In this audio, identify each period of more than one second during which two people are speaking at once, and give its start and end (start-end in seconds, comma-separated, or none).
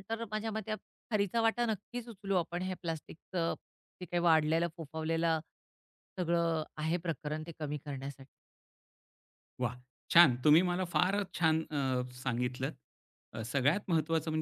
none